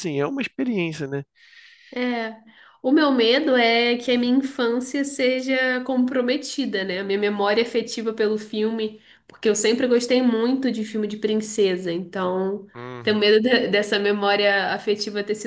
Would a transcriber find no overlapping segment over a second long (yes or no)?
yes